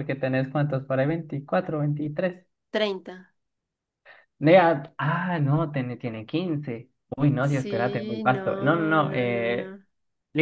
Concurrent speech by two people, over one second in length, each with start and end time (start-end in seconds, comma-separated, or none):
7.4-9.8